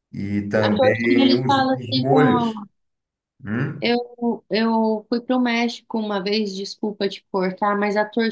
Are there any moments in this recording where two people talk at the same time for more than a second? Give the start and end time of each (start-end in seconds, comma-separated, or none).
0.6-2.2